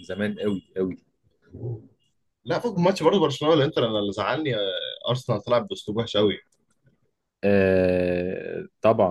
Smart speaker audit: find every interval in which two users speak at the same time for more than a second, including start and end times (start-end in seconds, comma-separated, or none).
none